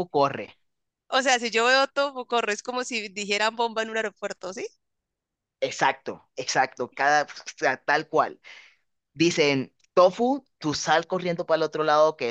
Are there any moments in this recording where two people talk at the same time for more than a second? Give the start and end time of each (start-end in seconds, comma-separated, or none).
none